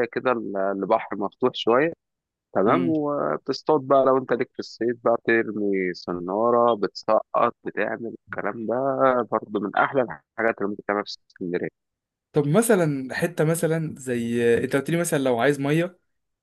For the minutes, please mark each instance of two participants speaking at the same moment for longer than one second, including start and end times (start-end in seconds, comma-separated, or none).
none